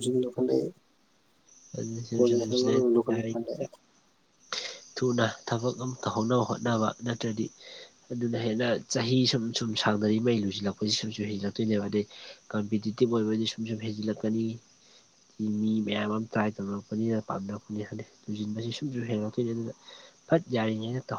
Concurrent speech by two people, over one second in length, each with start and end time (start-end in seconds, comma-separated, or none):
2.1-3.5